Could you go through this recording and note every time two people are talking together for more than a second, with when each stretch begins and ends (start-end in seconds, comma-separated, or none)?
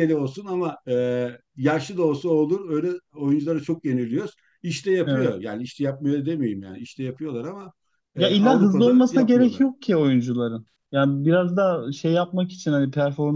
8.2-9.6